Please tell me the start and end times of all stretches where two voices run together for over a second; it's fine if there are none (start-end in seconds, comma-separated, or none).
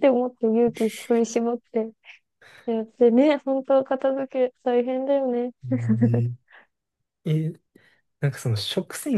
none